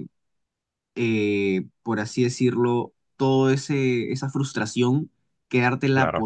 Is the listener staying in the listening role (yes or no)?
yes